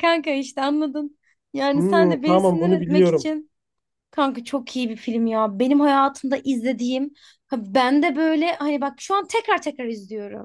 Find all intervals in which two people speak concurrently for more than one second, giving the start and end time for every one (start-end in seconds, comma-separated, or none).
1.7-3.3